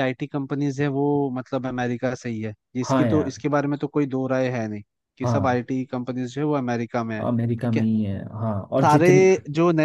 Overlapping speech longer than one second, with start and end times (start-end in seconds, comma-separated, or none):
none